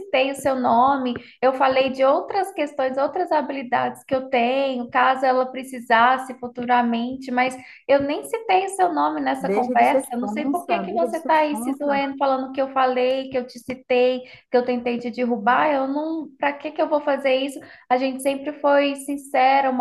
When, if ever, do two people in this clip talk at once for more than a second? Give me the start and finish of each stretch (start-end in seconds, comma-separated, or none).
9.4-12.0